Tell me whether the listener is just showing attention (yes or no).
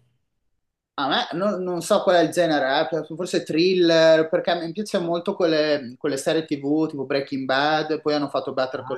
yes